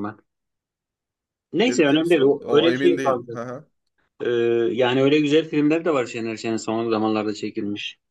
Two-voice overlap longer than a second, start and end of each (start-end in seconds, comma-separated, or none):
1.7-3.4